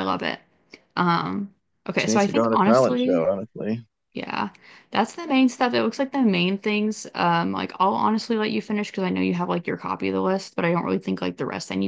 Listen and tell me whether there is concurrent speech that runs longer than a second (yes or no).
yes